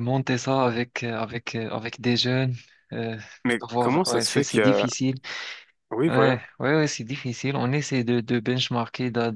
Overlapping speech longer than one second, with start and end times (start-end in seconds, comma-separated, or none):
3.6-4.9